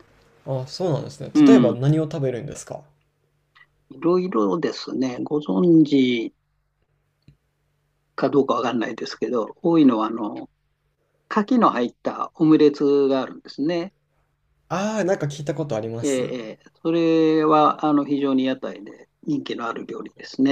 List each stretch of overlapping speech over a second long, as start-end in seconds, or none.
none